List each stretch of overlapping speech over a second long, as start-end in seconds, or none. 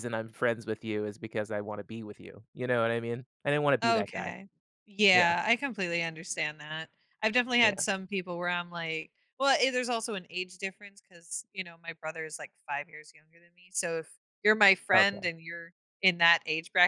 none